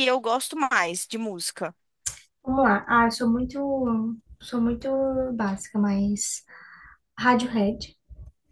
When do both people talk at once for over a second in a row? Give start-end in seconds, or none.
none